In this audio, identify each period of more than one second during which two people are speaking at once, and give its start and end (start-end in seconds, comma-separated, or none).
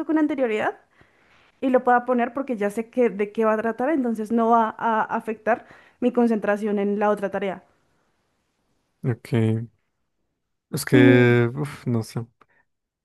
none